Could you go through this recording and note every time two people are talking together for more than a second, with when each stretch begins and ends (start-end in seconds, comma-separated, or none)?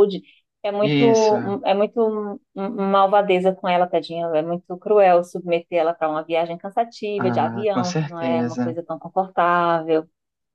7.2-8.8